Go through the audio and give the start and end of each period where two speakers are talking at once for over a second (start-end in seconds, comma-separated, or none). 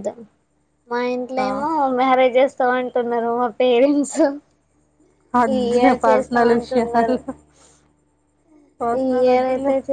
5.5-7.1